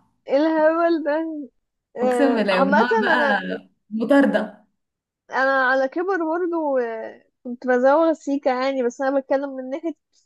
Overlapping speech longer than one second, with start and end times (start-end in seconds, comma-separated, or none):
2.0-3.4